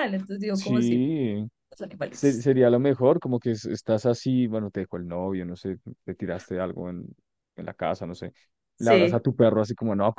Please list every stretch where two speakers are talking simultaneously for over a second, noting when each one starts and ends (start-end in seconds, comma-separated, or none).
none